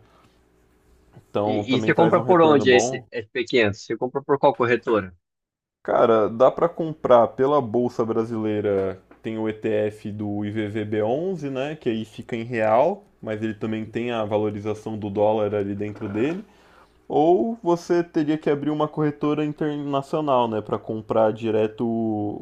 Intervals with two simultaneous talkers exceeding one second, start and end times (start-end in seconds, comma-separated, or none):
1.4-3.0